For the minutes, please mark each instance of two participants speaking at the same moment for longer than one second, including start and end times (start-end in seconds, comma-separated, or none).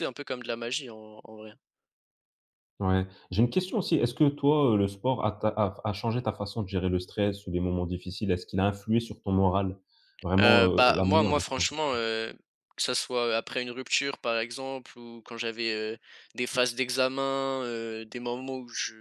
10.4-11.7